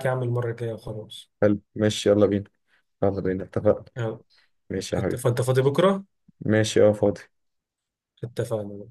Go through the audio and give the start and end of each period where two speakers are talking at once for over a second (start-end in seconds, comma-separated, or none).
none